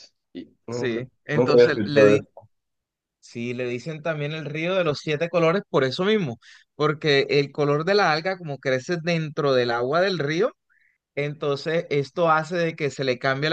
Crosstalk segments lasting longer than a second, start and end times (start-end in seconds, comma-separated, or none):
0.7-2.2